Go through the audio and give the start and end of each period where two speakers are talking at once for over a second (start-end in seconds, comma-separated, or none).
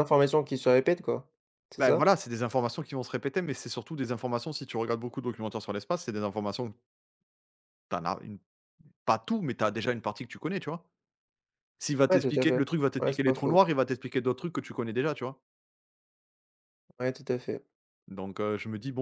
12.1-13.7